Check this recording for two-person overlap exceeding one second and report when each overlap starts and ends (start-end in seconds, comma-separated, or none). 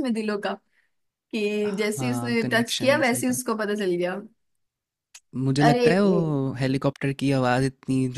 1.7-3.5